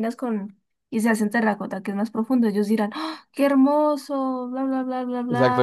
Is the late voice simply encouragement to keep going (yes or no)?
no